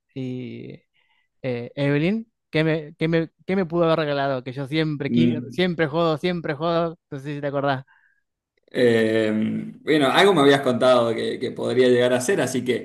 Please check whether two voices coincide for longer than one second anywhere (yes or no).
no